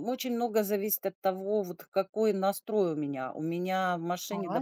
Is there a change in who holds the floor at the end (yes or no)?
no